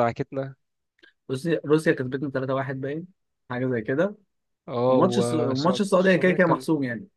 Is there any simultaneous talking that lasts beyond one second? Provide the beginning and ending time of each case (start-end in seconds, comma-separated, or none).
4.9-6.6